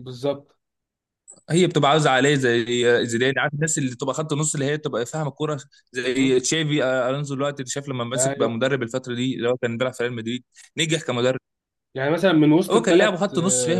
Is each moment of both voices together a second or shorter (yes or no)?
yes